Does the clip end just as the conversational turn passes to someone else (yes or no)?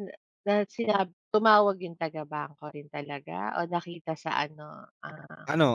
yes